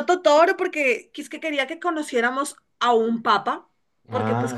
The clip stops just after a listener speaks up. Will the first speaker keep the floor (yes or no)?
yes